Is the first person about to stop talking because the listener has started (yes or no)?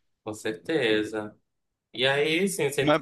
no